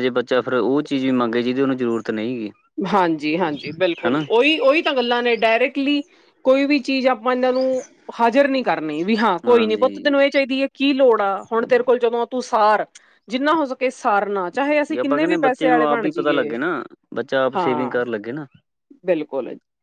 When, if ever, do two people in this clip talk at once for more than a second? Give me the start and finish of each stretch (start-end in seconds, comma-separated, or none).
15.0-16.5